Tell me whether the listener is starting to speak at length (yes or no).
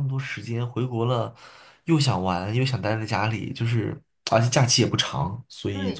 yes